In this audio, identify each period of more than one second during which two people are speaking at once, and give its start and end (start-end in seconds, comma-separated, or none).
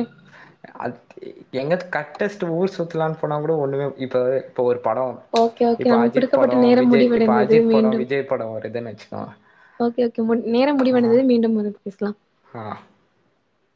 5.8-8.0